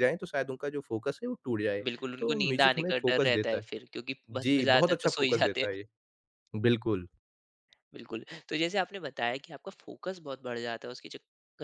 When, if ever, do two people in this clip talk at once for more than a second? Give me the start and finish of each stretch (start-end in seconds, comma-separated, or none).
1.8-3.7, 4.3-5.7